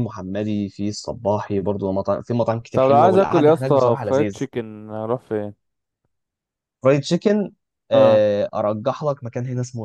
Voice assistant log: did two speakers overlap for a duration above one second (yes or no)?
yes